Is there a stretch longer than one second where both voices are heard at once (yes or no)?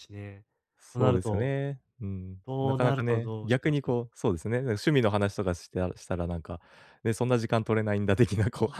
yes